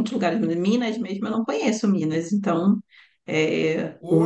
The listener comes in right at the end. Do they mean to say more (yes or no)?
yes